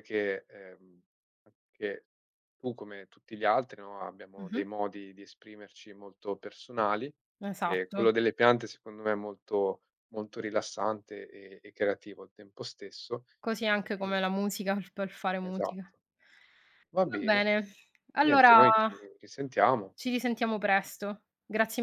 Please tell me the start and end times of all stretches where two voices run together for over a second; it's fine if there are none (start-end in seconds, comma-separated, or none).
none